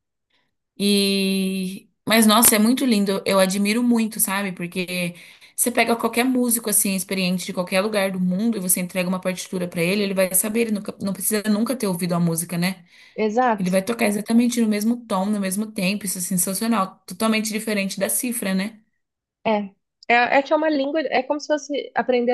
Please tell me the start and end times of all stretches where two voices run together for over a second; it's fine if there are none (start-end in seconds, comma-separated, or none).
none